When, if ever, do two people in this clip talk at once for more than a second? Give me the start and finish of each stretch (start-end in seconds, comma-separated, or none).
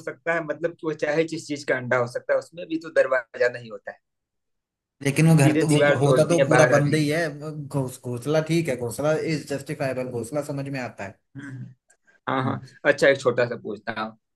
5.4-7.0